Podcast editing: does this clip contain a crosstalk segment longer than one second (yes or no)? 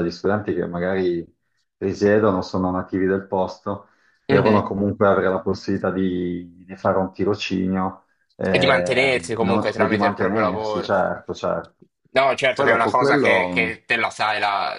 yes